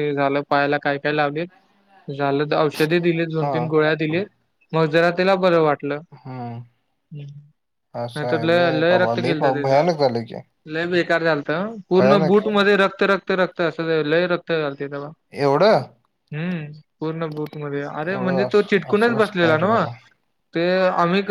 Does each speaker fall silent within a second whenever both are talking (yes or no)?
no